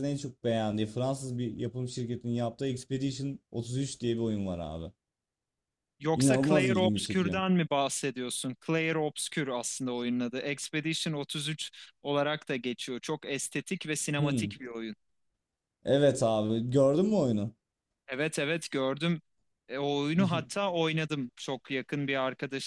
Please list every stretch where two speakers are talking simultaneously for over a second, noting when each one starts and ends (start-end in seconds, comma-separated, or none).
6.2-7.4